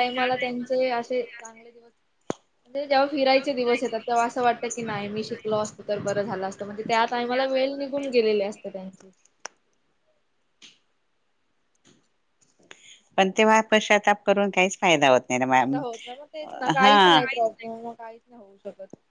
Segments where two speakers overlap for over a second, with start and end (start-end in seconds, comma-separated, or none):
none